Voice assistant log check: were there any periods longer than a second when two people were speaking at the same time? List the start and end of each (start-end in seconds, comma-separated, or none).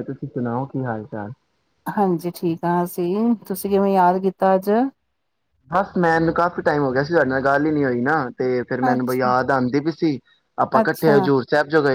none